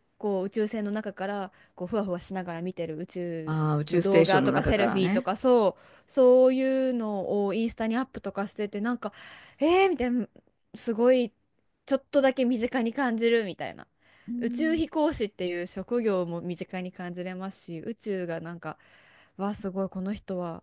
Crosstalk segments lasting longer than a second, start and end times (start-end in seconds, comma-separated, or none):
3.5-5.3